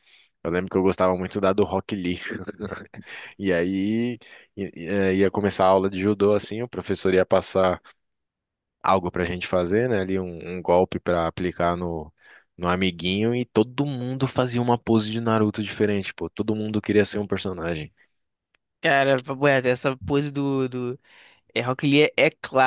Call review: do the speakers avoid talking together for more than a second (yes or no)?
yes